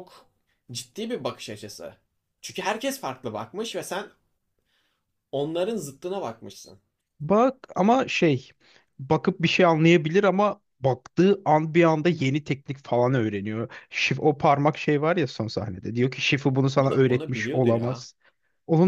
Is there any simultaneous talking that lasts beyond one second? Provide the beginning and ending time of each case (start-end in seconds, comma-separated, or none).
16.8-18.1